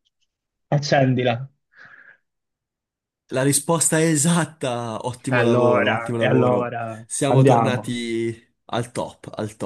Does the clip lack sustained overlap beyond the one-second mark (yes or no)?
no